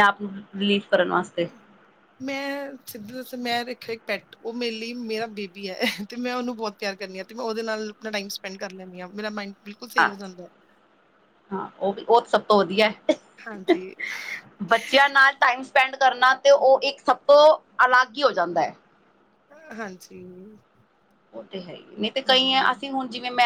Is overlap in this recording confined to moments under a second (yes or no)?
yes